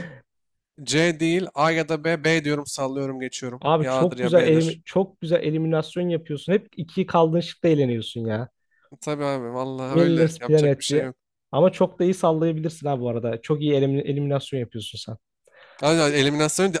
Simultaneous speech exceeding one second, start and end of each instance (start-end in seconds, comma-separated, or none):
3.6-4.8, 9.9-11.1